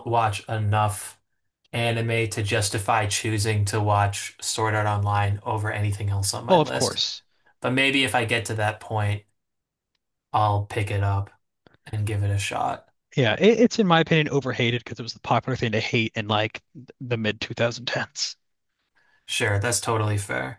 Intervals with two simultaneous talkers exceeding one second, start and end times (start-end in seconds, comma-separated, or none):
none